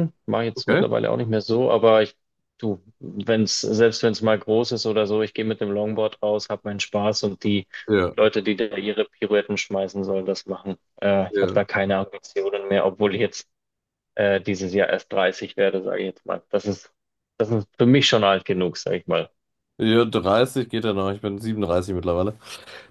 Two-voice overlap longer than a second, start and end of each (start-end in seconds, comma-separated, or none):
none